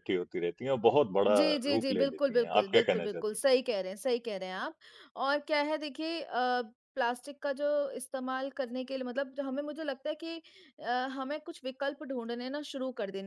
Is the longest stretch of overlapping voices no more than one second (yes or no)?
no